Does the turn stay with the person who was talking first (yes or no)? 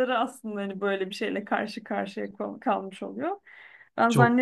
yes